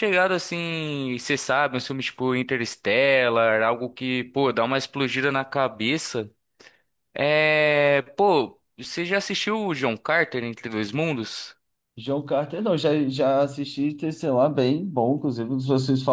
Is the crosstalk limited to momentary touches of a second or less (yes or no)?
yes